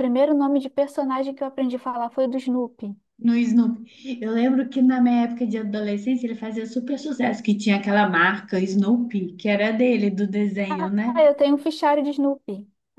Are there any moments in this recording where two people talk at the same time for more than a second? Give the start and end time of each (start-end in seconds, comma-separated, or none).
none